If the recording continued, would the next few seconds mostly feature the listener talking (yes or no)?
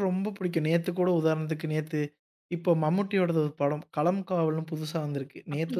no